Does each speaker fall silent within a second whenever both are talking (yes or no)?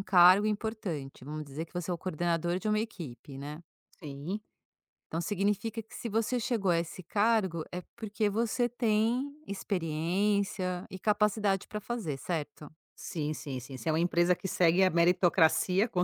yes